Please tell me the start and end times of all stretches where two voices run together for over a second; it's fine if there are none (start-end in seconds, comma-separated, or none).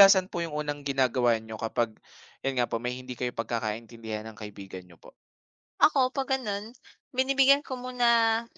none